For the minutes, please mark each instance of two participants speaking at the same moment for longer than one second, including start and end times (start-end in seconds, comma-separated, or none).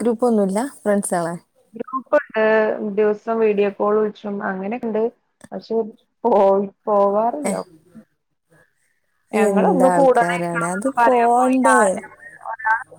9.5-10.9